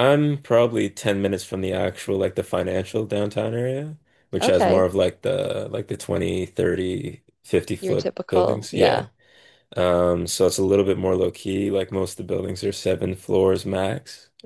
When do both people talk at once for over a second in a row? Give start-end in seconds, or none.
7.8-9.1